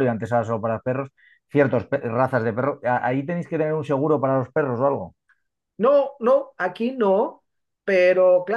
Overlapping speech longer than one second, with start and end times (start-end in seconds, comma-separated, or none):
none